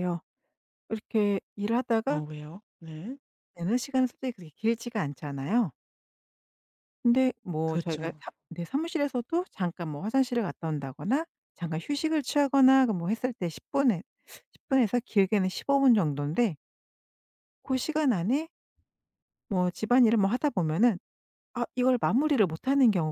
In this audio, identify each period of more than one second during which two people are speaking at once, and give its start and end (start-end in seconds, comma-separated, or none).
none